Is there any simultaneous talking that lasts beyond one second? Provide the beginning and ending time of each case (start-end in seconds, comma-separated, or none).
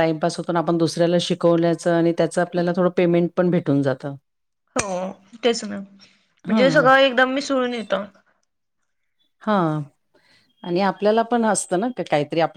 none